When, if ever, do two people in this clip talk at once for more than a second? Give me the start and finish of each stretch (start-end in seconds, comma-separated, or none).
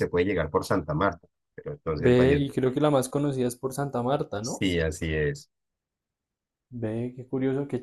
none